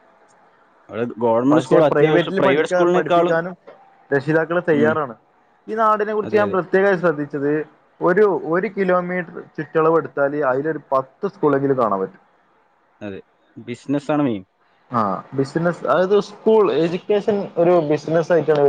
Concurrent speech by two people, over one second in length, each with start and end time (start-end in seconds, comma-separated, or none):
1.5-3.4